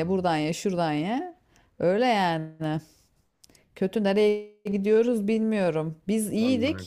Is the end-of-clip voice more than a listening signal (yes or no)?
no